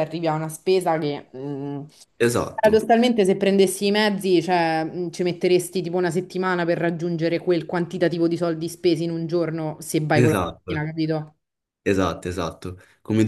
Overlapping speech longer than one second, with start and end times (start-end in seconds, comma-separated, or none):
none